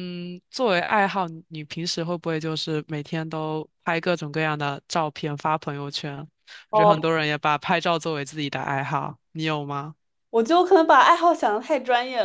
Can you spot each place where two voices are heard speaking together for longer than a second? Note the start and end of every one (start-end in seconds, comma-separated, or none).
none